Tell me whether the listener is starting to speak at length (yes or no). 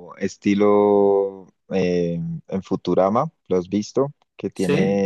no